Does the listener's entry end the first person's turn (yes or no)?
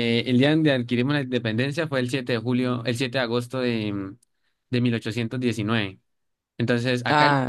no